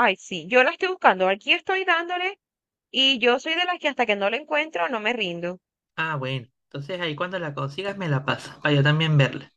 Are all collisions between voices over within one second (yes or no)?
yes